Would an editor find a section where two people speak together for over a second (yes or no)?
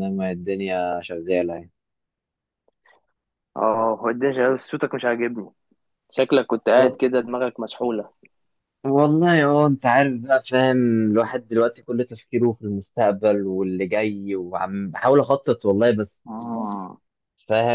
no